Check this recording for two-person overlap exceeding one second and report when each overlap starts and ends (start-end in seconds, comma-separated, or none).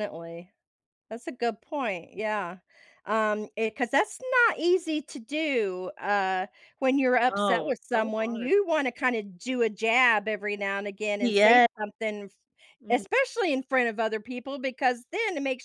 7.3-8.5